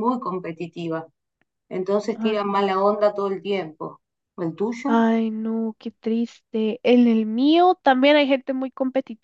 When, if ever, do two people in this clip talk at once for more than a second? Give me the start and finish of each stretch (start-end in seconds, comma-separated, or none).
none